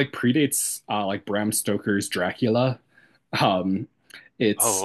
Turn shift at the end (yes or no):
no